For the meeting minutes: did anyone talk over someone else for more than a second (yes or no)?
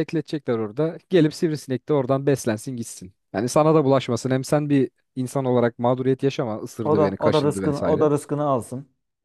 yes